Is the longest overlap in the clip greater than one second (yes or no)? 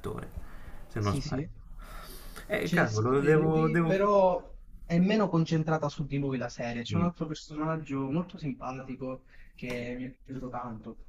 yes